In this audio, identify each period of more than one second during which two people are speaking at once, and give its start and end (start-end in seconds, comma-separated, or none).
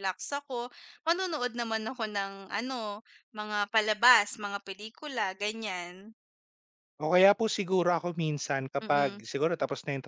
none